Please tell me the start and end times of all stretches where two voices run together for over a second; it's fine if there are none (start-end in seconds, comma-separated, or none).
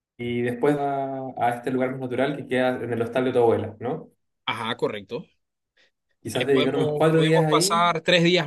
6.3-7.9